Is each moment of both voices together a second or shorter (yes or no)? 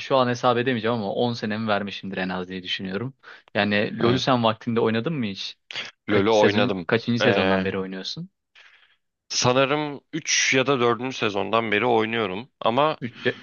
no